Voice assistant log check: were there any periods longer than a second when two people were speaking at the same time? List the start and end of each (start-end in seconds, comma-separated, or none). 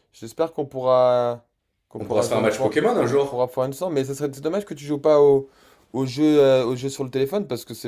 2.0-3.5